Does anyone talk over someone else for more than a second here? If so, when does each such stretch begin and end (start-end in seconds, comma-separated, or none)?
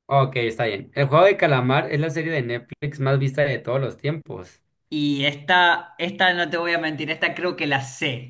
none